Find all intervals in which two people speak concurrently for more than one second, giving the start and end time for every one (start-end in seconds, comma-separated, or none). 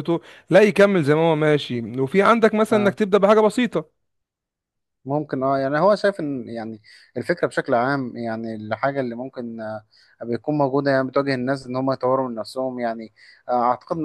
none